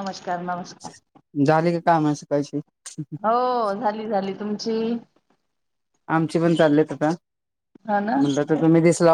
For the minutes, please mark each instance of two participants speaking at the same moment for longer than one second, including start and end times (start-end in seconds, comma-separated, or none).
none